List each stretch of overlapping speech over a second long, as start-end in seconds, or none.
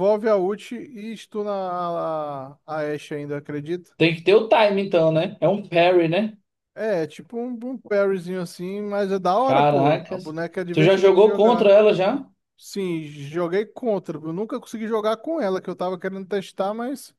9.4-11.8